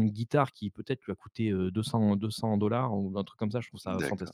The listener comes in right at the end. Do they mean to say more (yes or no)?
yes